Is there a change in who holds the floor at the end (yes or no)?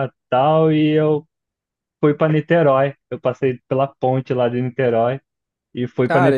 yes